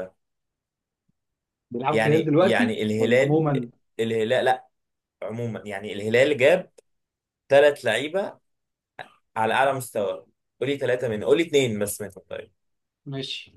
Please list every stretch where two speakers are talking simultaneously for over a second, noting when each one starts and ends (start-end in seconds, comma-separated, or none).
1.9-3.4